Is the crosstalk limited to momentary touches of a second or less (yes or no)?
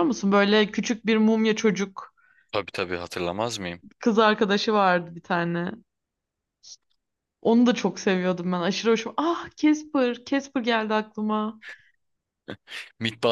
yes